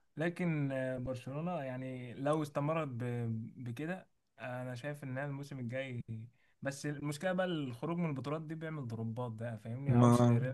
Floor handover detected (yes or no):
no